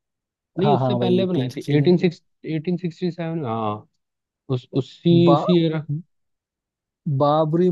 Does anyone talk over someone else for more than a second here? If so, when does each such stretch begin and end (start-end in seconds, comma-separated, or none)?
0.6-2.0